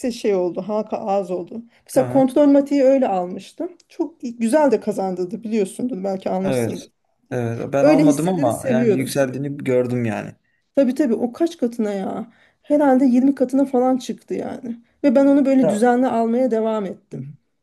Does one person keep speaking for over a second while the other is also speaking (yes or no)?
yes